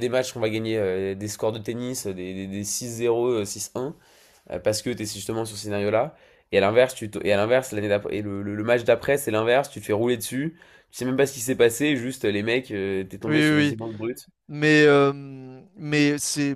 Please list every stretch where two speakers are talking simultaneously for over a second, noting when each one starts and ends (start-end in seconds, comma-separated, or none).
none